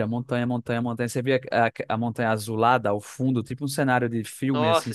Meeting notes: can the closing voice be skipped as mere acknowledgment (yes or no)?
no